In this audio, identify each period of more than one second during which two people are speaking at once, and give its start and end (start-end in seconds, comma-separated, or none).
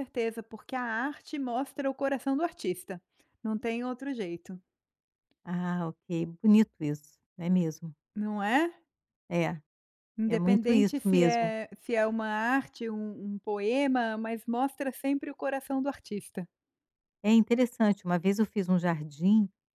10.3-11.5